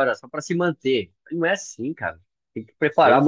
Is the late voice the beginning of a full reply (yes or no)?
no